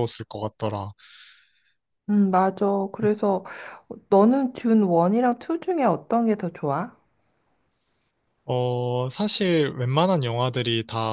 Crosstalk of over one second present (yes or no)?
no